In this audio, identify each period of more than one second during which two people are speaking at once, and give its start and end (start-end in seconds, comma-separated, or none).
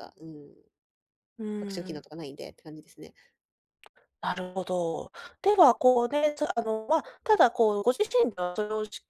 none